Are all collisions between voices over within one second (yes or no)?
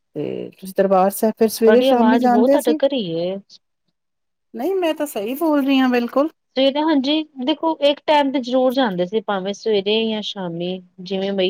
no